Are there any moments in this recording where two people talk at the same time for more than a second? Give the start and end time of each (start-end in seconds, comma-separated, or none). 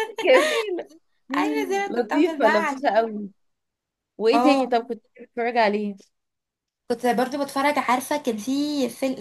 1.9-3.1